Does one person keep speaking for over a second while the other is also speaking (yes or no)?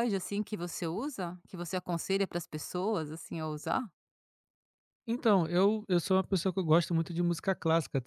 no